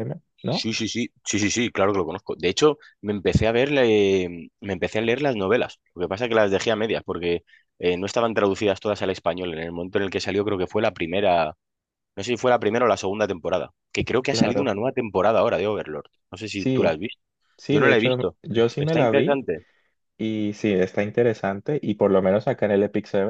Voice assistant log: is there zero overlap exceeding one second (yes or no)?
no